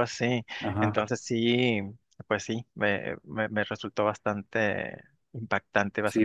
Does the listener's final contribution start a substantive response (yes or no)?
yes